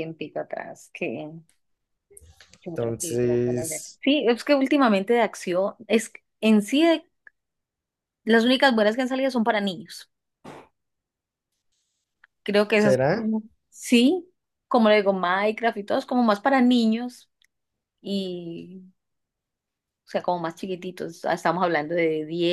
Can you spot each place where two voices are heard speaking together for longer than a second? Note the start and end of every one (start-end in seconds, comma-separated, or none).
2.7-4.0